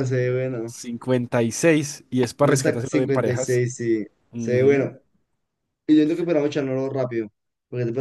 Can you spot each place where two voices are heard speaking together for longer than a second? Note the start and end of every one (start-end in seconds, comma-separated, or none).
2.4-3.6